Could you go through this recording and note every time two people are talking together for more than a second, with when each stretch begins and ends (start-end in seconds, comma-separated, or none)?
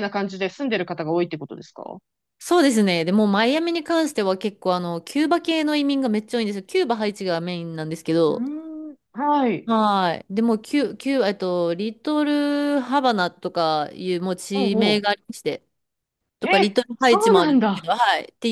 16.4-17.9